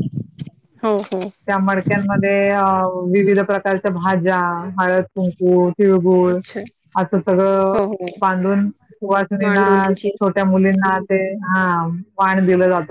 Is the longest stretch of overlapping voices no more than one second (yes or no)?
yes